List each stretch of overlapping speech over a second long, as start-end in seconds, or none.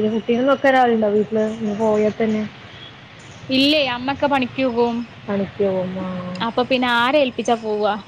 none